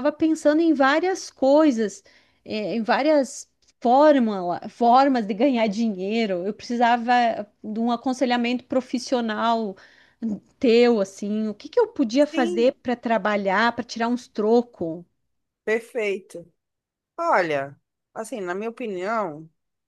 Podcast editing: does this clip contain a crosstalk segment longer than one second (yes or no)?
no